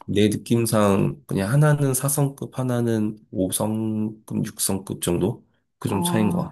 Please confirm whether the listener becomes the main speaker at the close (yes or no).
yes